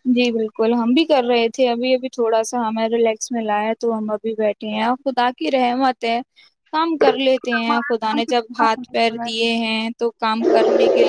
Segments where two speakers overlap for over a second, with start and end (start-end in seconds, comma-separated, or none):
7.6-9.3